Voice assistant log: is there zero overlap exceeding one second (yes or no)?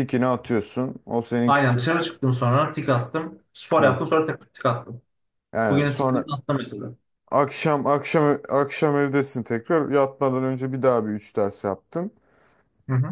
yes